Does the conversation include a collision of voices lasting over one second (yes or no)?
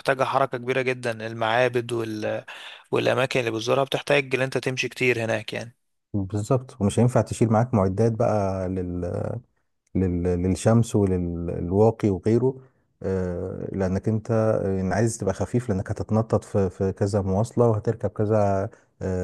no